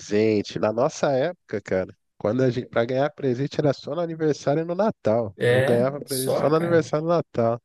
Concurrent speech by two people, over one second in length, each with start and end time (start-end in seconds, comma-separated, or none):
5.4-6.9